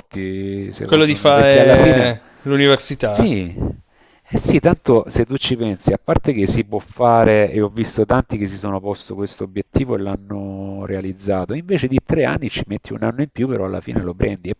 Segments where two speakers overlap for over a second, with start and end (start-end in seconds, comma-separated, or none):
0.8-2.1